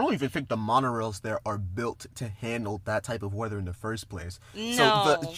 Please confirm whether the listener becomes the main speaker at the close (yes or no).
no